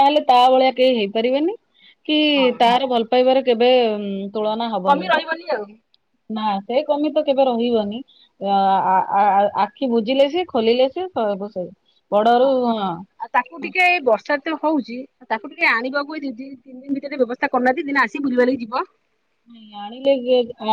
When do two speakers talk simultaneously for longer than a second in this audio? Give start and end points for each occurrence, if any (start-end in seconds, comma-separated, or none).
none